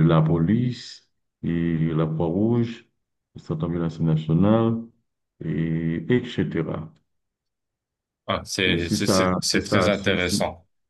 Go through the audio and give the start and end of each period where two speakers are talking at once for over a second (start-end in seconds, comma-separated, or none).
8.7-10.3